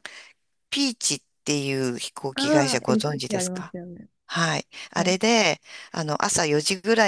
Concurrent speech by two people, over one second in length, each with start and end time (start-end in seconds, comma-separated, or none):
2.3-3.8